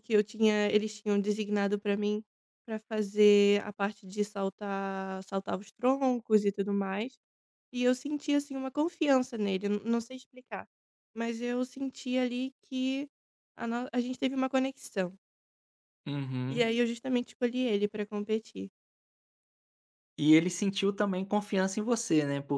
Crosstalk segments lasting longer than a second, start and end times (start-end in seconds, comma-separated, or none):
none